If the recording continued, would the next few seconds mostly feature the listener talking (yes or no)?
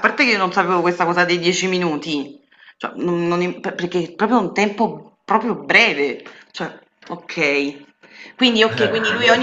no